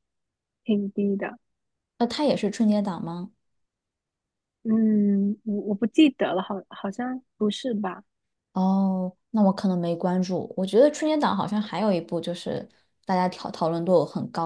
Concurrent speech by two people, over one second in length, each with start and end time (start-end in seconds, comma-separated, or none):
none